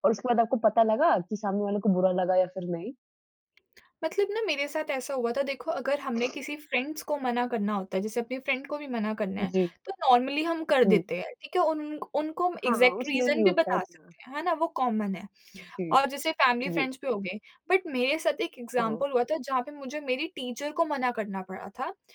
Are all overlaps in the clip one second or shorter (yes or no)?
no